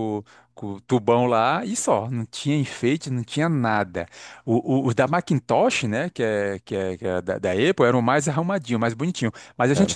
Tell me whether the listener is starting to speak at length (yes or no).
no